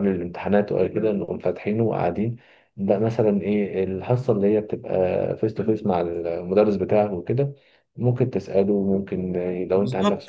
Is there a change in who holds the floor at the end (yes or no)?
yes